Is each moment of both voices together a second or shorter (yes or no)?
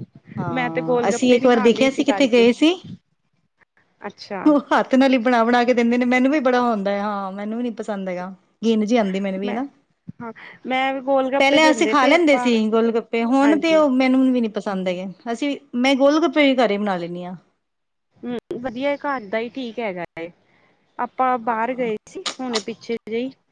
no